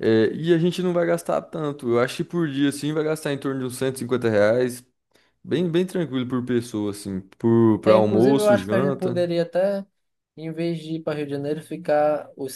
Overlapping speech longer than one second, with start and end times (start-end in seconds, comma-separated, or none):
7.8-9.2